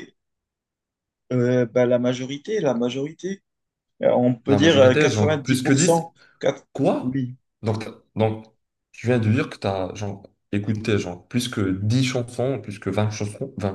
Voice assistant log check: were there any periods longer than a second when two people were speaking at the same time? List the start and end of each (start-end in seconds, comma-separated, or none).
4.5-6.1